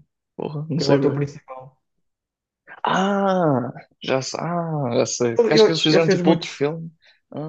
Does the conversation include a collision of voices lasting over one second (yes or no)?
yes